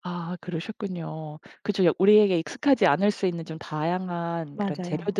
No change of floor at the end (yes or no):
yes